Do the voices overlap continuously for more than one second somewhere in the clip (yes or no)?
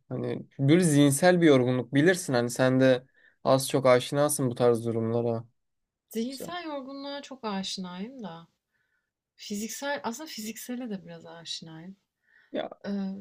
no